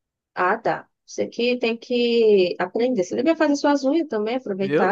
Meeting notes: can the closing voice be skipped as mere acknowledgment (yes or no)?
no